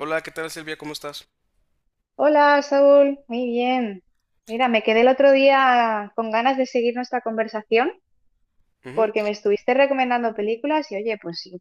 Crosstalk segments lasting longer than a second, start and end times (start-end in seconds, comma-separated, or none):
none